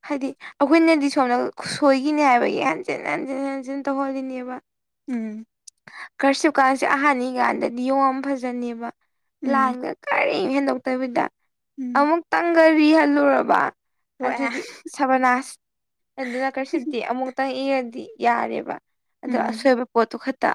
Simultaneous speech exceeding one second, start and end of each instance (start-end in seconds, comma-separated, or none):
none